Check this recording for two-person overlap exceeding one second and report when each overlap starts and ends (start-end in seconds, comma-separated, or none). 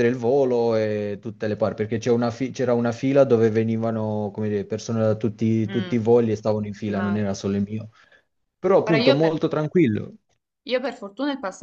none